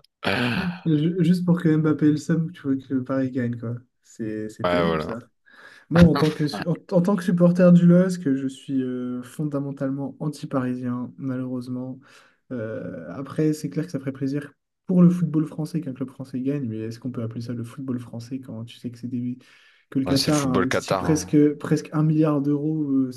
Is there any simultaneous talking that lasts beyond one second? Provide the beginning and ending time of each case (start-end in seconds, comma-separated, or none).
20.1-21.4